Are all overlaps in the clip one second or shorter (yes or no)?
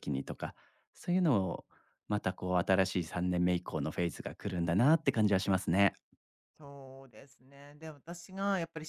yes